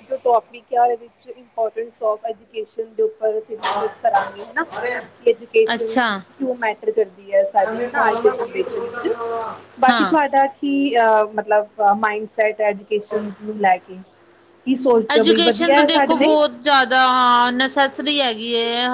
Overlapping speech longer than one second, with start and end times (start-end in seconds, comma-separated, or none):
none